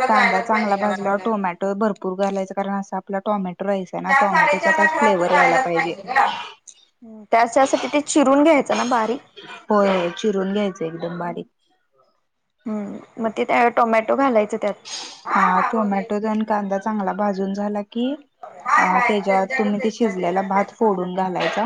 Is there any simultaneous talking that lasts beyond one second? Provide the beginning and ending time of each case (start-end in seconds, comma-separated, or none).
4.1-5.7, 18.8-21.1